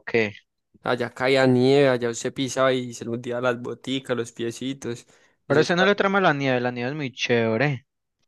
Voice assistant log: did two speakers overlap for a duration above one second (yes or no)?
no